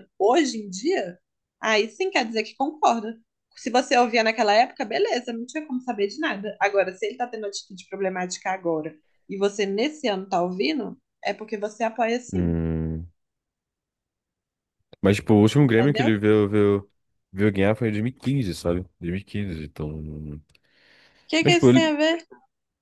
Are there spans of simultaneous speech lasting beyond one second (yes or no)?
no